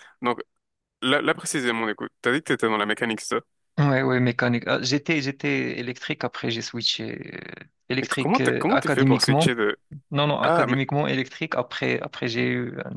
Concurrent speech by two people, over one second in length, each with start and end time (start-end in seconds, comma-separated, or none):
8.0-9.6